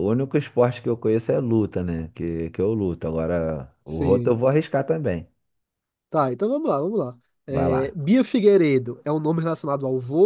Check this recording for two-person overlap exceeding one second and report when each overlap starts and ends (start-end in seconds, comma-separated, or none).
none